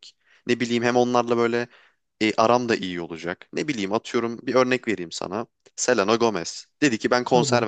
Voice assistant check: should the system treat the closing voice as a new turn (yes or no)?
no